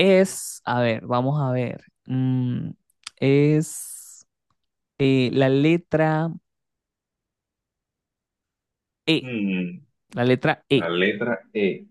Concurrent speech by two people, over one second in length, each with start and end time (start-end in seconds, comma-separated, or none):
none